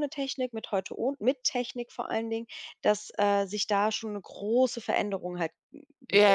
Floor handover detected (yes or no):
yes